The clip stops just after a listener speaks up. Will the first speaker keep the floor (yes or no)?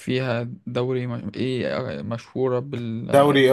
no